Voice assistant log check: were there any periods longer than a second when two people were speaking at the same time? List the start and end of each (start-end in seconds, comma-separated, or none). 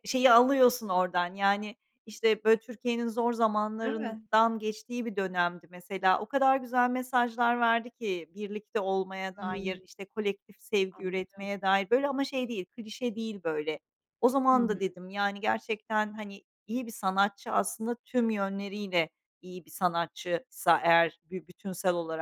none